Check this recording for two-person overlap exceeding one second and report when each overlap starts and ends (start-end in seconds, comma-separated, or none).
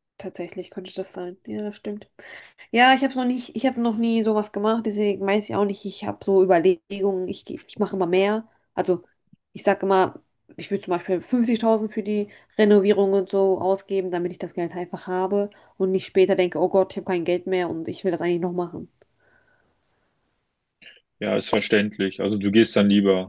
none